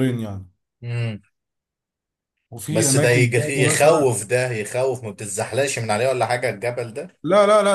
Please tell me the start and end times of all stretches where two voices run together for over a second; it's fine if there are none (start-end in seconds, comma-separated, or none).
2.7-4.1